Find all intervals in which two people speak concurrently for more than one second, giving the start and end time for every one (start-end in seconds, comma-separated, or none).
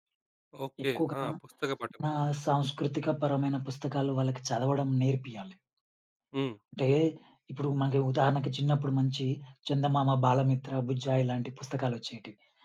none